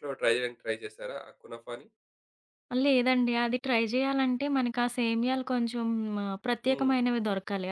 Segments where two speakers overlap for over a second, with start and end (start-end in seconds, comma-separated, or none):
none